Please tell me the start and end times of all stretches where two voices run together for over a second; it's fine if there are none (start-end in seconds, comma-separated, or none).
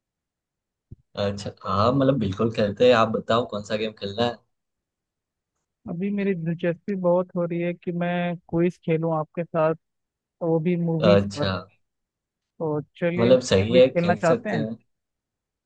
13.2-14.6